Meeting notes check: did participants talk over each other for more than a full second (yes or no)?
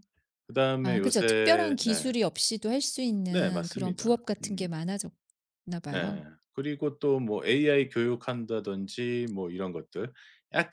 yes